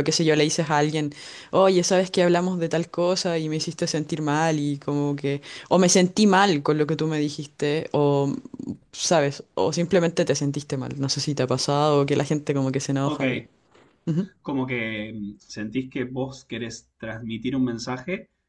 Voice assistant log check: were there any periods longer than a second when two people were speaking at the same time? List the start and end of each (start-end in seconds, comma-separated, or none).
none